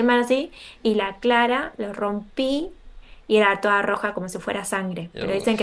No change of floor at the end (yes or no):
yes